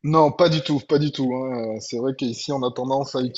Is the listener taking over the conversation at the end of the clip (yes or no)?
no